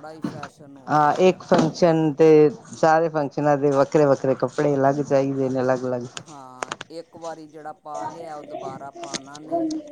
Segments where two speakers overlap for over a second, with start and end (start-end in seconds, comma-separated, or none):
none